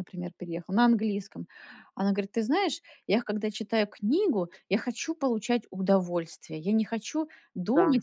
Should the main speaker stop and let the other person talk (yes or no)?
no